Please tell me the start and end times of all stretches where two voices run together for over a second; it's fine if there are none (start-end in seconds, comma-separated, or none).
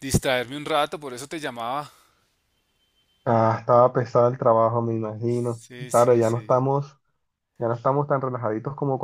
5.3-6.7